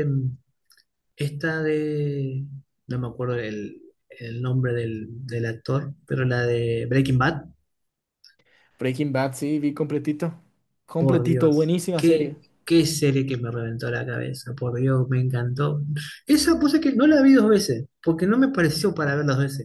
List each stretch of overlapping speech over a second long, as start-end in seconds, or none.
11.0-12.3